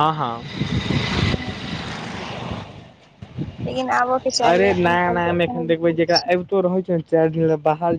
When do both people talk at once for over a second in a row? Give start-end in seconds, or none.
4.5-6.3